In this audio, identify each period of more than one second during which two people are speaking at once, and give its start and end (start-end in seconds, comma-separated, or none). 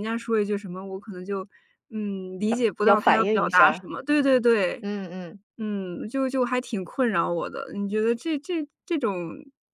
2.5-3.9